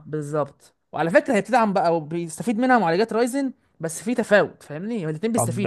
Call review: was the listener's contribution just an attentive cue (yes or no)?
no